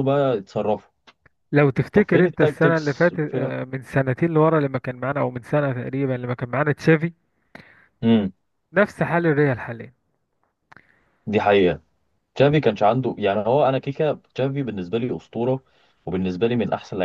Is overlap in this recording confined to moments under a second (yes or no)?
no